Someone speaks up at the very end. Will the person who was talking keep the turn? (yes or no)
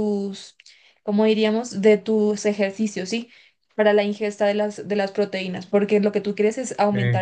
yes